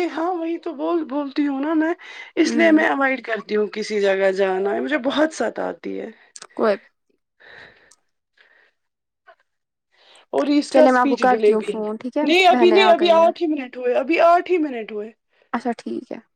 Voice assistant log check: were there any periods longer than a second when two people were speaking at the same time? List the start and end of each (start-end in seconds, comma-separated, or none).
10.7-13.3